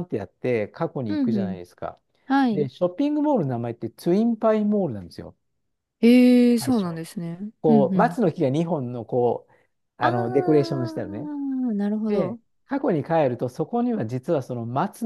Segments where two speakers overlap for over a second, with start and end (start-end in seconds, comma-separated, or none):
10.0-11.3